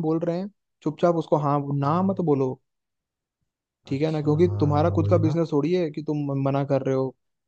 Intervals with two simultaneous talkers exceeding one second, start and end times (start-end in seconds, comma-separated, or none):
3.9-5.4